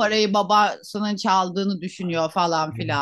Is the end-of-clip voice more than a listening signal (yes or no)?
yes